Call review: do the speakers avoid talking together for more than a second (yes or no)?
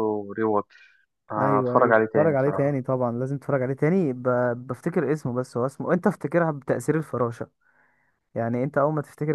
no